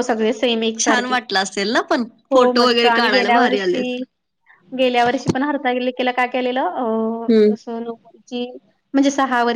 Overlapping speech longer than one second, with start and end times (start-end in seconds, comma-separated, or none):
2.3-4.0